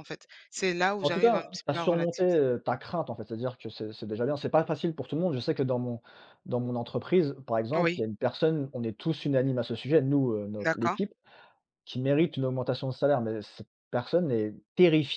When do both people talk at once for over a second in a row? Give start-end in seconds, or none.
1.0-2.4